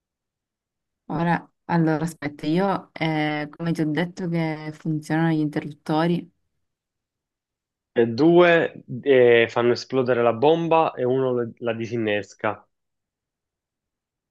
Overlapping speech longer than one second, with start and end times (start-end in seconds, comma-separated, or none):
none